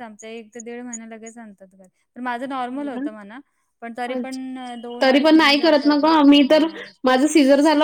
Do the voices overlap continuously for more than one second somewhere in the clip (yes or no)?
no